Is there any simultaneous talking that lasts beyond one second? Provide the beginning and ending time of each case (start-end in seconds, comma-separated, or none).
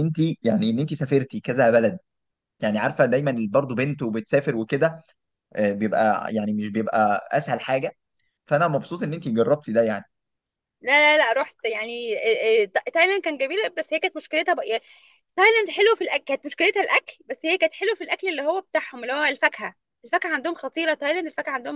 none